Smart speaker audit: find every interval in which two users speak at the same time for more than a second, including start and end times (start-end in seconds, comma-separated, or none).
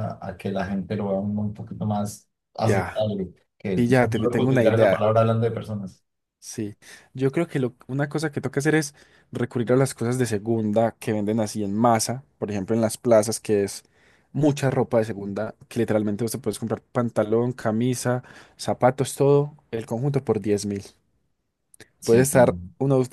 3.7-5.1